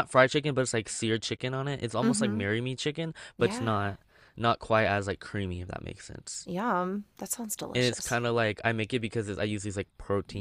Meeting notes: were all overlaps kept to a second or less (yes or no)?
yes